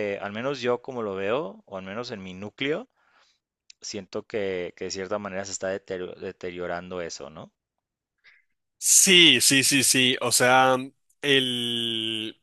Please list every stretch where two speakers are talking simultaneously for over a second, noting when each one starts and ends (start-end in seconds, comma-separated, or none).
none